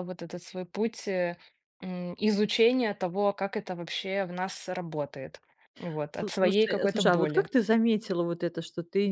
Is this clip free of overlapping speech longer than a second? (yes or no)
no